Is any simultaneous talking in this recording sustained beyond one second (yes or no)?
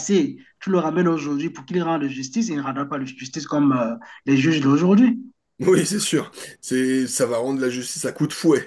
no